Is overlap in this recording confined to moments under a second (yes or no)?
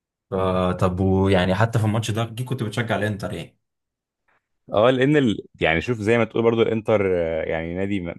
yes